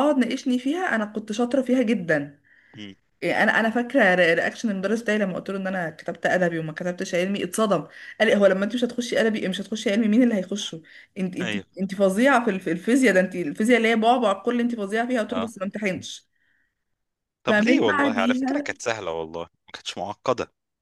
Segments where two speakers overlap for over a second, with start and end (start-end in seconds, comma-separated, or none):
17.5-18.7